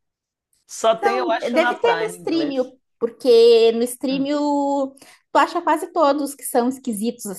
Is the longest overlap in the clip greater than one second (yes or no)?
yes